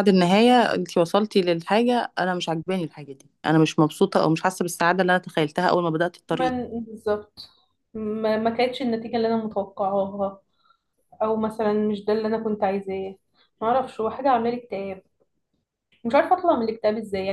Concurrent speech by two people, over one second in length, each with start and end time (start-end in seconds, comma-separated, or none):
none